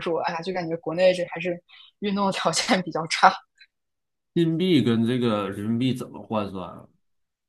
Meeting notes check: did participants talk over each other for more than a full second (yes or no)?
no